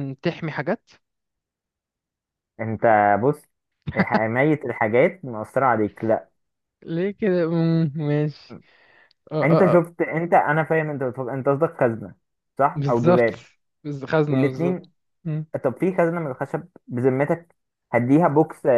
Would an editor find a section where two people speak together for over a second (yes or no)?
no